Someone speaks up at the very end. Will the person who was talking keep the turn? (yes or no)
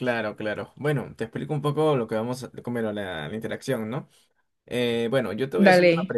yes